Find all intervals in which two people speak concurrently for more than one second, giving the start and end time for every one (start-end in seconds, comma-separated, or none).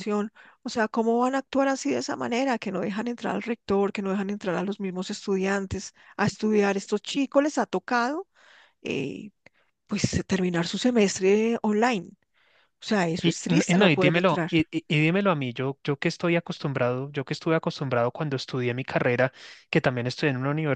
13.2-14.5